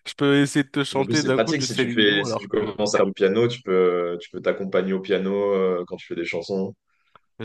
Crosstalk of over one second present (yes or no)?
yes